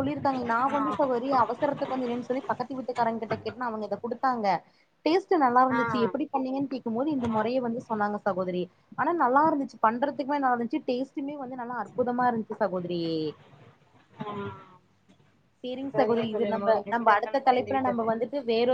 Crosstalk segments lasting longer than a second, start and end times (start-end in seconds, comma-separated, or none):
15.9-18.1